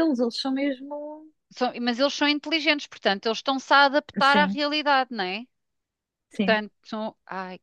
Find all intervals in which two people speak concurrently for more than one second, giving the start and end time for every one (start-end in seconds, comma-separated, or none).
none